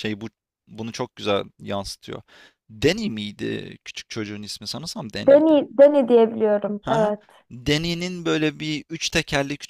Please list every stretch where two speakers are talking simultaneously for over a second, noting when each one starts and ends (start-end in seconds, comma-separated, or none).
none